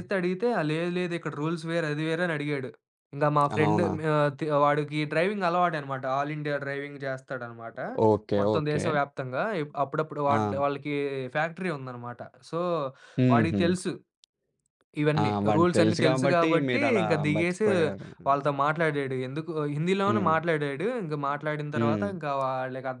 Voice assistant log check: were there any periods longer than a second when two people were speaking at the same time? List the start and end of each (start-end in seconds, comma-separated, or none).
15.2-17.7